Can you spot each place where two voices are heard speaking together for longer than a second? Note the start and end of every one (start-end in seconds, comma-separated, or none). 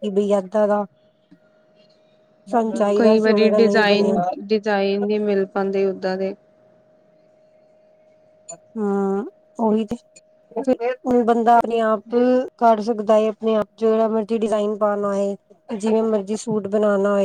3.0-4.3